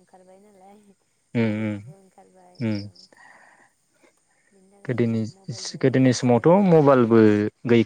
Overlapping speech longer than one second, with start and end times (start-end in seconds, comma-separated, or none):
4.9-6.4